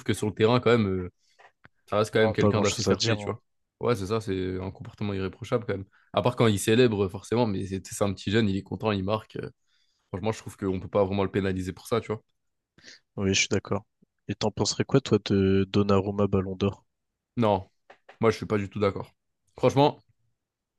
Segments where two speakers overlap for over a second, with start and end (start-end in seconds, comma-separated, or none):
2.1-3.4